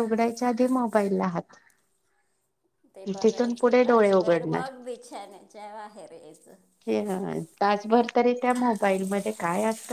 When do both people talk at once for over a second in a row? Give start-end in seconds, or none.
3.2-4.6